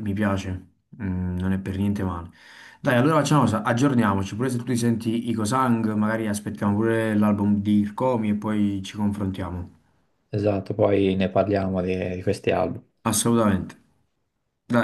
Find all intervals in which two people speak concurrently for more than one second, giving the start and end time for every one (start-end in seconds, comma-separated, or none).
none